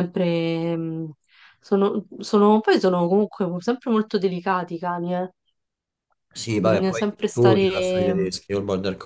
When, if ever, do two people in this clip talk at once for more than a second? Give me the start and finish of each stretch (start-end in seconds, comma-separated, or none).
6.6-8.3